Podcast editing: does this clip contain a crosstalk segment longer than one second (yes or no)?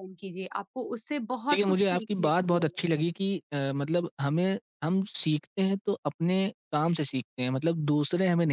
yes